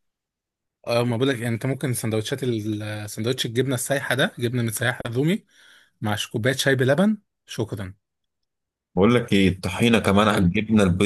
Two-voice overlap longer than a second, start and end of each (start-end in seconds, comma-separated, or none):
none